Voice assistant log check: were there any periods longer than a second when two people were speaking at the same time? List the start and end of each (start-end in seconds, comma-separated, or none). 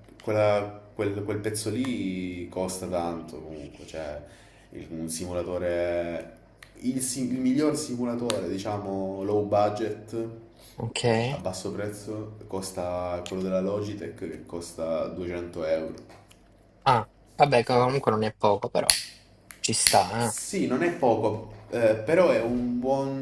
none